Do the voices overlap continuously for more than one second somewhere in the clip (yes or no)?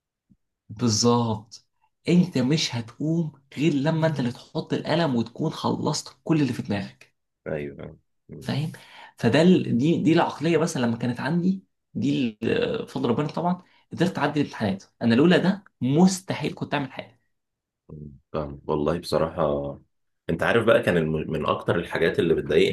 no